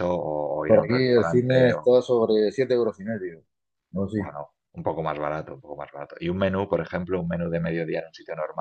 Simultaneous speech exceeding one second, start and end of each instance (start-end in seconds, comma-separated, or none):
0.7-1.9